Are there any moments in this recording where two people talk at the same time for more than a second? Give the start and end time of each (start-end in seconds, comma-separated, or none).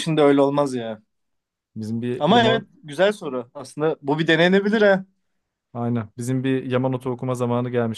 none